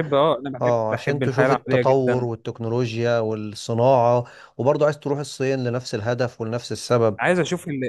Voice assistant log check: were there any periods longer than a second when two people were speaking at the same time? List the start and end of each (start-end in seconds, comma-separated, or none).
0.6-2.3